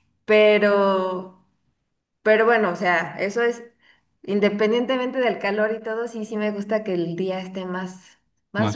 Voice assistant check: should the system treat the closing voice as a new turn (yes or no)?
yes